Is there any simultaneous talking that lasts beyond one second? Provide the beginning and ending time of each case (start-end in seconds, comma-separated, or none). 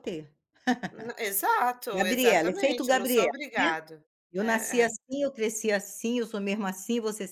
1.9-3.7